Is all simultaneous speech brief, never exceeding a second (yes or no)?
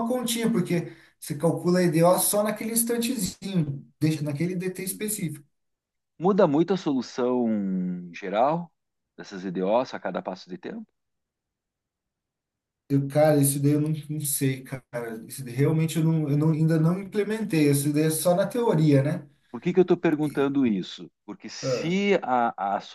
yes